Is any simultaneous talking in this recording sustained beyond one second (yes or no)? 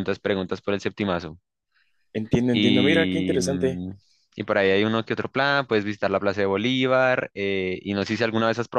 yes